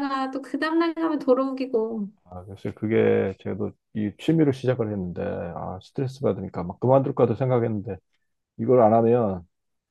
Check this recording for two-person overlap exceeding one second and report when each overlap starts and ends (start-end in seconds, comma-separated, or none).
none